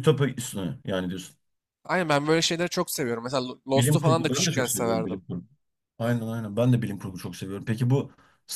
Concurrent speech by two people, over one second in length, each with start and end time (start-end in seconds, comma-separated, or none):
3.7-5.2